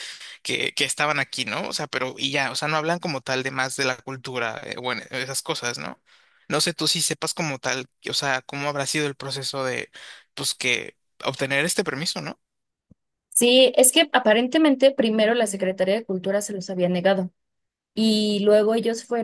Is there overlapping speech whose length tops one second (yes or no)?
no